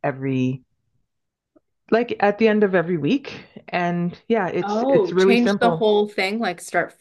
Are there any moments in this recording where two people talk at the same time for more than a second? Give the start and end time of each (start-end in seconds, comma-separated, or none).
4.6-5.9